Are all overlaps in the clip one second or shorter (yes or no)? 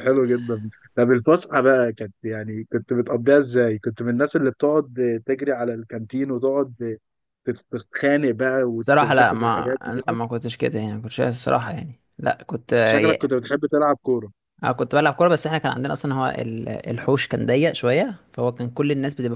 no